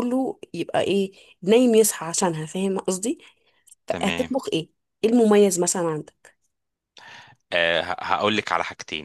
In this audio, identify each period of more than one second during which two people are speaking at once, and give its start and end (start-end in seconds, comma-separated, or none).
none